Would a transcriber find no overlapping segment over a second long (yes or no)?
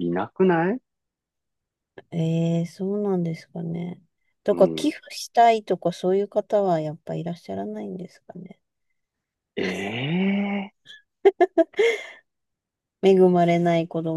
yes